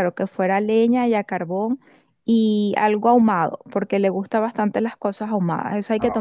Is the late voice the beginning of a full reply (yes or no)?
yes